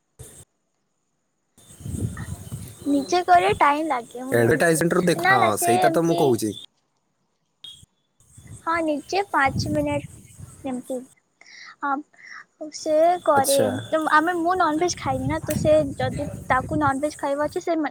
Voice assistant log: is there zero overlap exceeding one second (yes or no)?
no